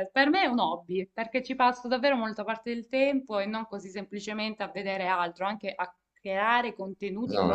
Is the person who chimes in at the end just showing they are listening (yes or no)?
no